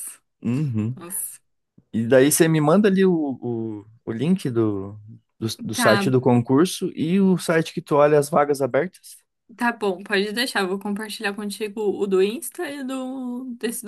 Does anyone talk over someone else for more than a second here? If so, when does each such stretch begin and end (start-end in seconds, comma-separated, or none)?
none